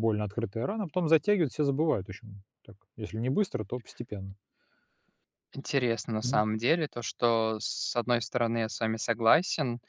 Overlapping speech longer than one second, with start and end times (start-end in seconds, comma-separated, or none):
none